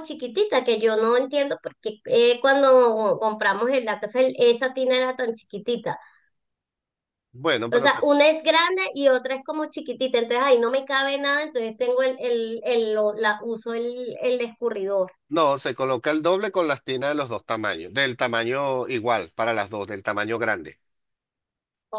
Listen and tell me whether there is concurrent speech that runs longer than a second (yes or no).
no